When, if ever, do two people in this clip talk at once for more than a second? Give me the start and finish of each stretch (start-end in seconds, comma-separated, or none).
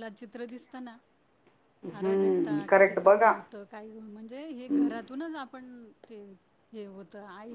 2.0-3.3